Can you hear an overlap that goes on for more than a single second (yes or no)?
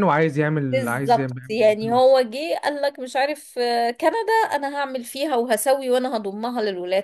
yes